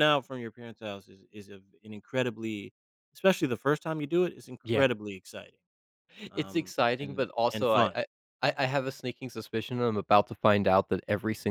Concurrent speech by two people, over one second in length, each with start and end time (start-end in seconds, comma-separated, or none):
6.3-8.0